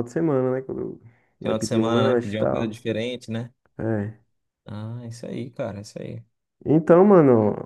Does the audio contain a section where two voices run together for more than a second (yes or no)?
yes